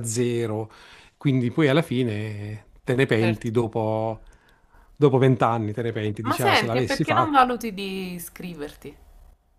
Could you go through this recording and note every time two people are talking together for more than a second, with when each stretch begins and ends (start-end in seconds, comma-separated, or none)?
6.2-7.5